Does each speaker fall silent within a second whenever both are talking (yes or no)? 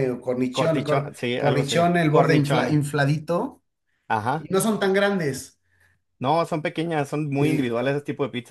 no